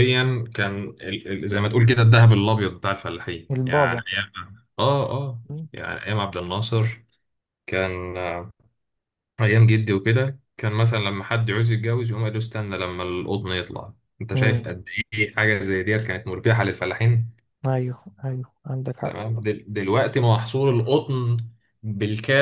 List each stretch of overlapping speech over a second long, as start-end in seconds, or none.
none